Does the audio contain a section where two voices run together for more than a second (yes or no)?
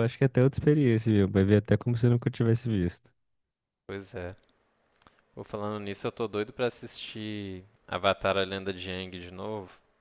no